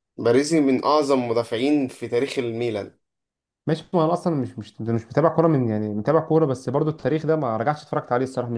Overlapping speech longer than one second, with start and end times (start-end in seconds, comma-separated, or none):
none